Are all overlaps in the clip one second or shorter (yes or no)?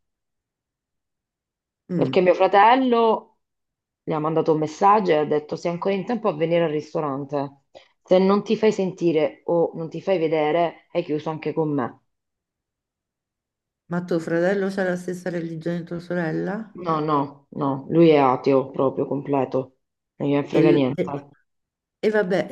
yes